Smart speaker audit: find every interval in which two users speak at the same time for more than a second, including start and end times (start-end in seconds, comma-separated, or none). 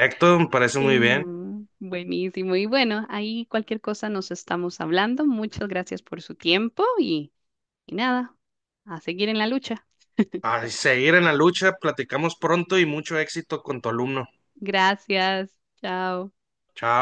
none